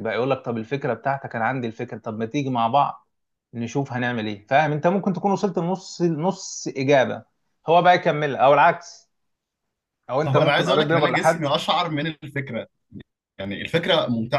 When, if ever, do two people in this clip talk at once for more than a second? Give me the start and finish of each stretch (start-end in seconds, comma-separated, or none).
10.2-11.4